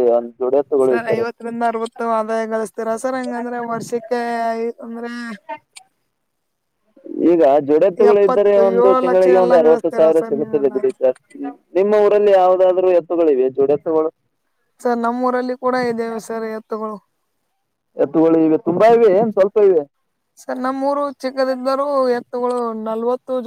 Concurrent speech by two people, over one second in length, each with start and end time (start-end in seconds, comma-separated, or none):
8.1-10.8